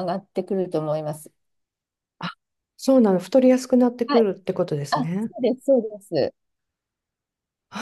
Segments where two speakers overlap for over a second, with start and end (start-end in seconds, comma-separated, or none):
none